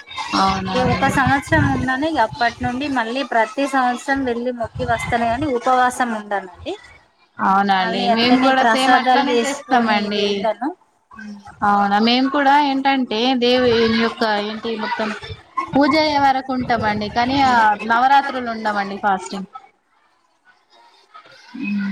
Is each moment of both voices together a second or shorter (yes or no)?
no